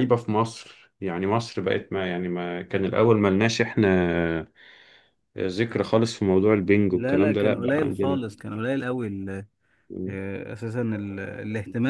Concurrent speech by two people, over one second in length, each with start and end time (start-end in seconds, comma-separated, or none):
6.9-8.2